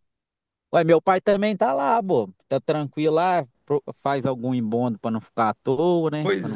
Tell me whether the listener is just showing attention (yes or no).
yes